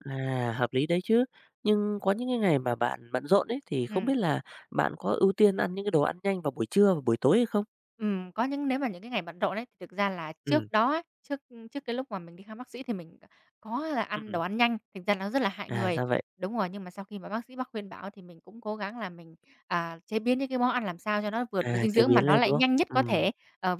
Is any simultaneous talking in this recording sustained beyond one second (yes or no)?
yes